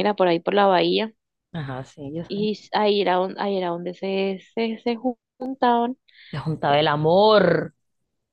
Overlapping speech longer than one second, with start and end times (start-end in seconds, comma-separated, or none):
none